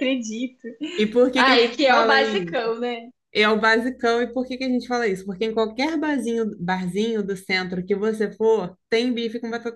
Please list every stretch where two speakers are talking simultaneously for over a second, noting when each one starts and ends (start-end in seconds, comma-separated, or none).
1.4-2.6